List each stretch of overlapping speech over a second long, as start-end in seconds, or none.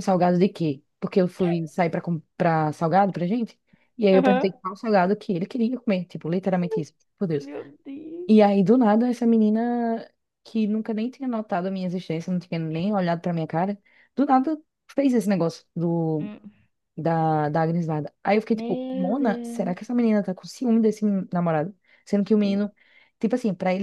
18.5-19.7